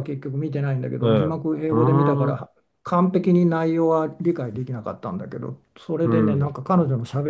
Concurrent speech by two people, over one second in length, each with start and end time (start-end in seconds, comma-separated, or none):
1.0-2.4